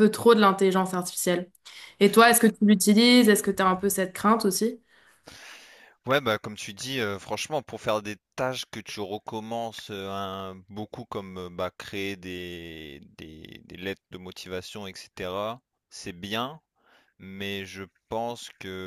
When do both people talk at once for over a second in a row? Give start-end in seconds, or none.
none